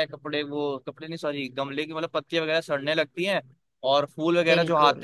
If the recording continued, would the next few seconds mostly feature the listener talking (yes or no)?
no